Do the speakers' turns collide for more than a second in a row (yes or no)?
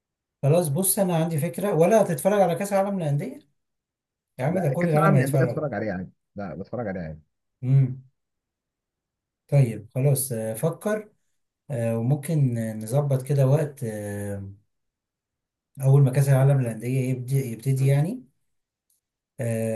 yes